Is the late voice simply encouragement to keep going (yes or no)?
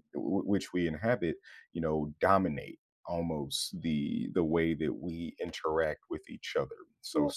yes